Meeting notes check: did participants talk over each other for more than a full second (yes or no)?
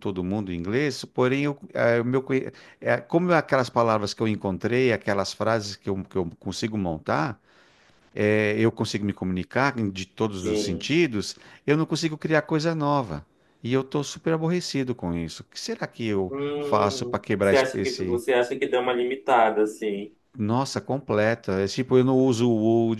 yes